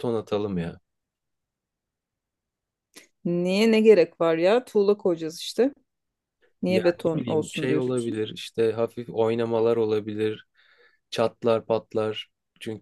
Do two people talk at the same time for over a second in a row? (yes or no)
yes